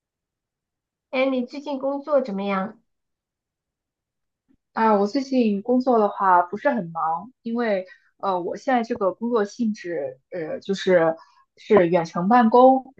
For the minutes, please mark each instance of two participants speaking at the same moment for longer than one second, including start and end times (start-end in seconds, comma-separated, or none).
none